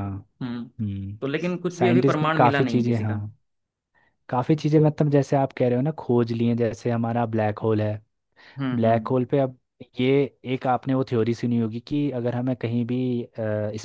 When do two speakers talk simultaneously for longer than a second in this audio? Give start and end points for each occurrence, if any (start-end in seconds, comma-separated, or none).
1.7-3.2